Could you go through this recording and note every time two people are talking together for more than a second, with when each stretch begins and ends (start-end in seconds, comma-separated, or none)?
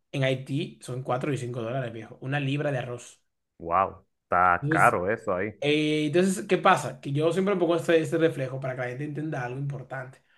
none